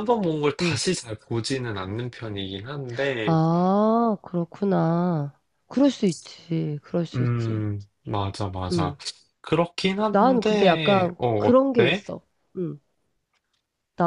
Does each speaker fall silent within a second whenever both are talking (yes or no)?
no